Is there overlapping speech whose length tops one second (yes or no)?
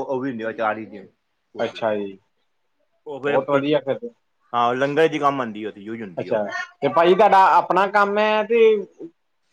no